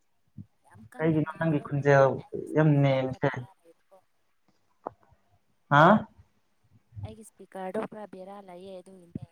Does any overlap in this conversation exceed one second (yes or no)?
yes